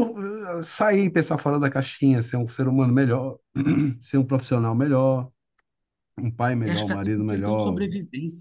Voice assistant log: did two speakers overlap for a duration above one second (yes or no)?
yes